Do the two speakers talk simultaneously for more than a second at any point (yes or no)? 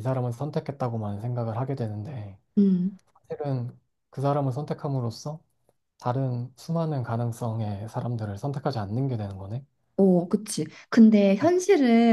no